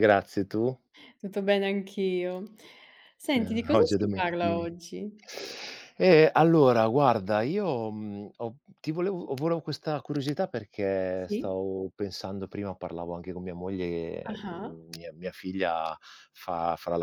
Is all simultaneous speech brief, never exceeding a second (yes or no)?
no